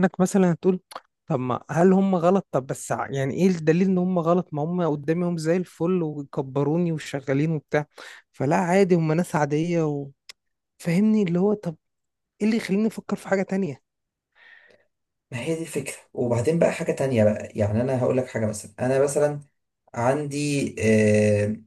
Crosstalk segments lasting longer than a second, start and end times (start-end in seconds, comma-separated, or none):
none